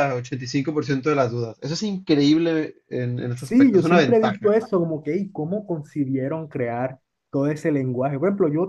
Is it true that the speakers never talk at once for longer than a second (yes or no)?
no